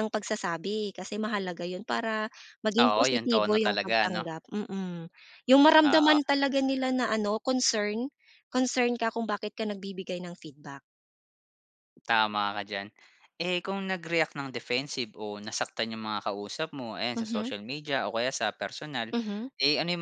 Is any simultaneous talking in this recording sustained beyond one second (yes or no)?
yes